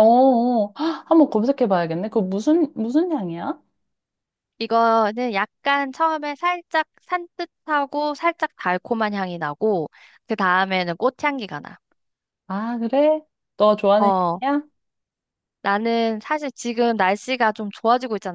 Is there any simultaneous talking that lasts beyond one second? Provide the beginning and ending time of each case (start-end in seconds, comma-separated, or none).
none